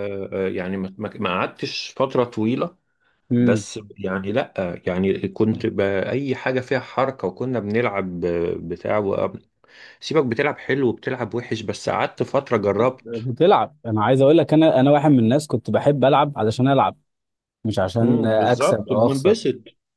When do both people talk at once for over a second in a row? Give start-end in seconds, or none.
18.0-19.4